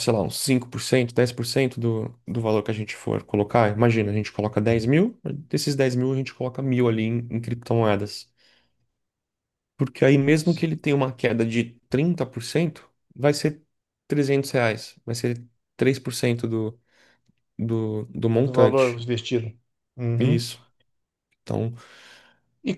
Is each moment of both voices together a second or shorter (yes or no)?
yes